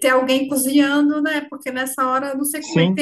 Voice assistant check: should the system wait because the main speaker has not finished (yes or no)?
yes